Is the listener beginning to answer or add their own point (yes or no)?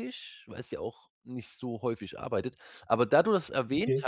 no